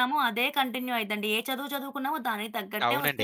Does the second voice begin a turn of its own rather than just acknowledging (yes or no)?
yes